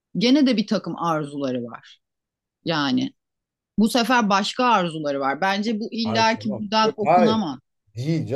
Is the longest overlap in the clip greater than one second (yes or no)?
yes